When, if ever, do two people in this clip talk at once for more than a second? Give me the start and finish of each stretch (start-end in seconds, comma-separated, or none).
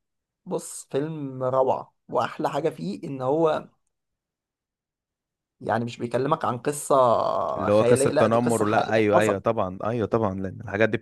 7.7-9.4